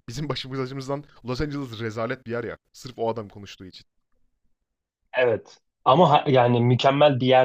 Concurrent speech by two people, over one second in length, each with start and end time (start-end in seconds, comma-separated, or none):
none